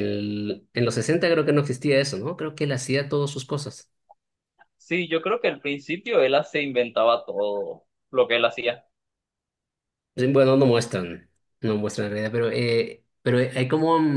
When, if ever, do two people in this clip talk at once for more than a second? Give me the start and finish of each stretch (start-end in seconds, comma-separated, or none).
none